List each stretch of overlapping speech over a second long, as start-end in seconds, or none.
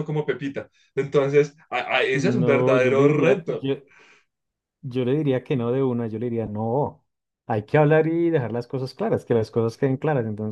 2.1-3.7